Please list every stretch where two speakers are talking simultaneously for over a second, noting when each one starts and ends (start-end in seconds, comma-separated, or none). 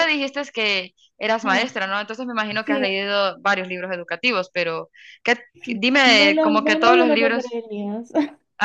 6.1-7.6